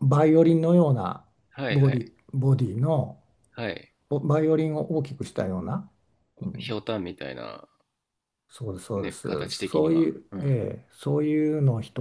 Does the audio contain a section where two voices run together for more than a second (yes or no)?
yes